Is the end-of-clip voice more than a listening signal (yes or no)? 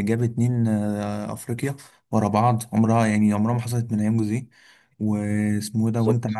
no